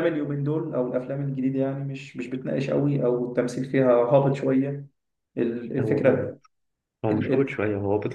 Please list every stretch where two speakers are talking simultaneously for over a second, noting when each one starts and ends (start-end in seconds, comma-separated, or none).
none